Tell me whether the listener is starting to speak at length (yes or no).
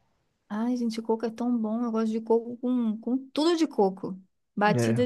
no